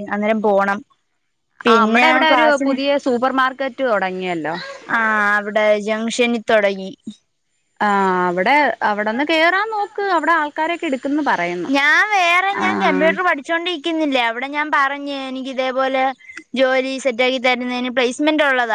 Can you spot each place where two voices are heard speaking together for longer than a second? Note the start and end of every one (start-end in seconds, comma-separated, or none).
none